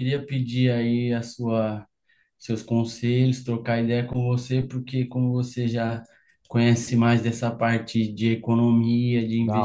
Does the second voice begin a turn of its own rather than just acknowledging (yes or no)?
no